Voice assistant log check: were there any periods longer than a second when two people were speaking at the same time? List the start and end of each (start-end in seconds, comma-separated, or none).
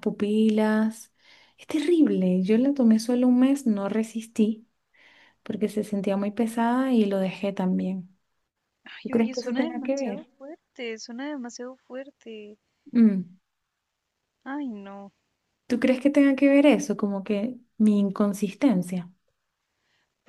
9.0-10.3